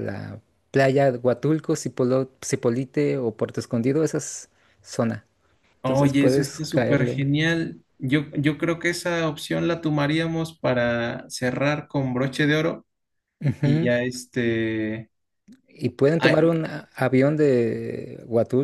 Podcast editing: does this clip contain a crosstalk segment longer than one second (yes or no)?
yes